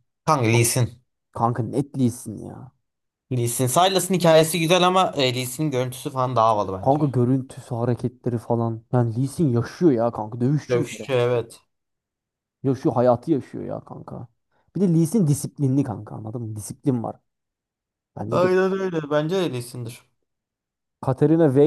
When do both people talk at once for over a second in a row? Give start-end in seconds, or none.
none